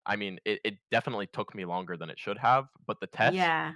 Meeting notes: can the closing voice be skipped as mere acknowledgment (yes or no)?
yes